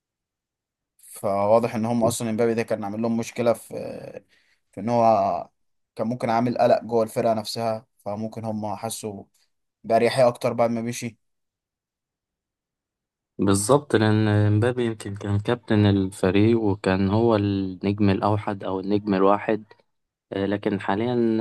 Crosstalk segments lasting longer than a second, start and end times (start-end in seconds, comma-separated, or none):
none